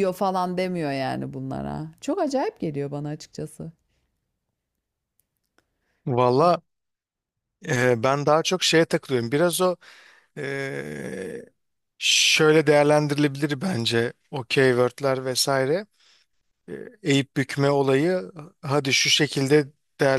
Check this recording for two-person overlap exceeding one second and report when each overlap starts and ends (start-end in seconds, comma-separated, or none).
none